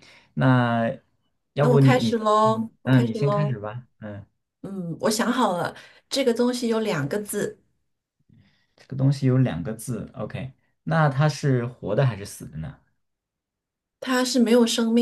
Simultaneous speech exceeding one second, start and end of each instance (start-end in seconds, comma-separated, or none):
1.6-3.6